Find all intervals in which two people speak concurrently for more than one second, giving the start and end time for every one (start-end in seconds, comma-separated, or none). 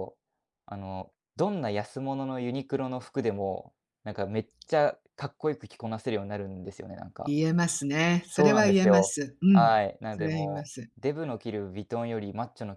8.3-10.9